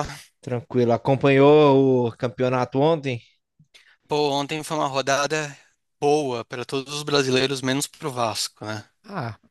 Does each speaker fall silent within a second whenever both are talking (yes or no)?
yes